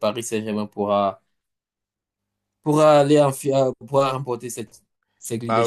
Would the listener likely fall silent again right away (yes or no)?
no